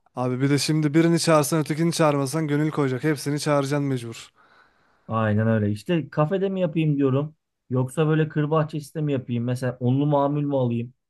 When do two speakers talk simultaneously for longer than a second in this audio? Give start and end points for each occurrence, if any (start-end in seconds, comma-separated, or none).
none